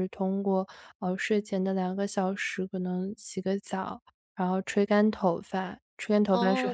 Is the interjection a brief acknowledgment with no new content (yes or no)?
no